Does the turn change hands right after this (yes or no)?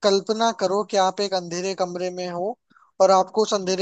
no